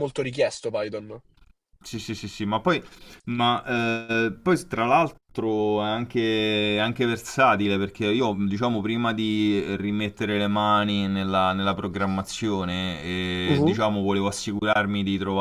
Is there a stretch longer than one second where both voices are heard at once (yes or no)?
no